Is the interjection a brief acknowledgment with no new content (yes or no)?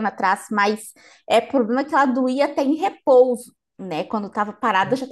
yes